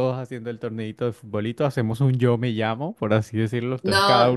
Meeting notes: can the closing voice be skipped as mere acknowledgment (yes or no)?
no